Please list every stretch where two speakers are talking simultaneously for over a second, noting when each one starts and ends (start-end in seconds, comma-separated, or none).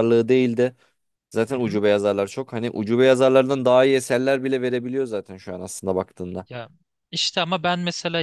none